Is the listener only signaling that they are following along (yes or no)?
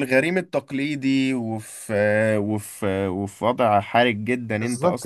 no